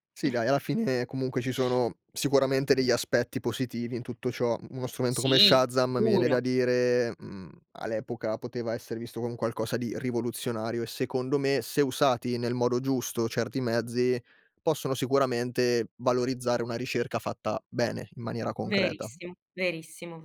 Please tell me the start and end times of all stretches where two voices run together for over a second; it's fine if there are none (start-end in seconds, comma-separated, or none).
5.1-6.4